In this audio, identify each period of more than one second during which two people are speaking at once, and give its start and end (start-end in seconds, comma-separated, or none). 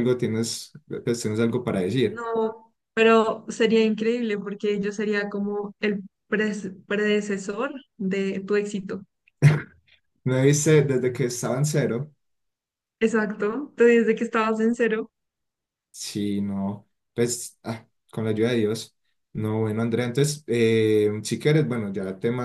none